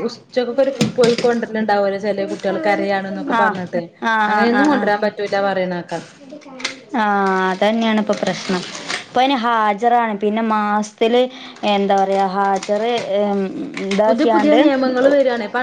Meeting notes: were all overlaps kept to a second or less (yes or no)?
yes